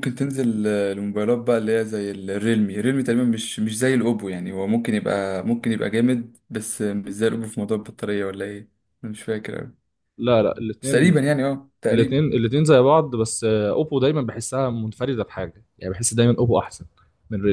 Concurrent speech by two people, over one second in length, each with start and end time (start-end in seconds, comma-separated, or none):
none